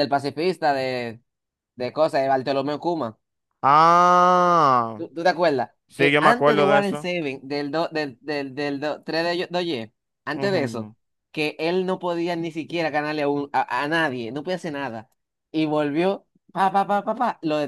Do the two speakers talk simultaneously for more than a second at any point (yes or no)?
yes